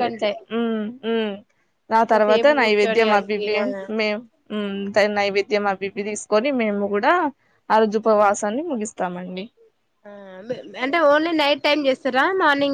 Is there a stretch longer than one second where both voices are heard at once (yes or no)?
yes